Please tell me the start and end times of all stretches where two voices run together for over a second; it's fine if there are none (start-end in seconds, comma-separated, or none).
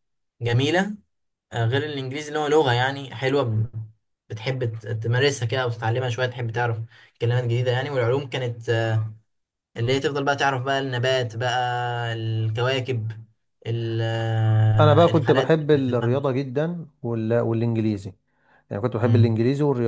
14.8-16.3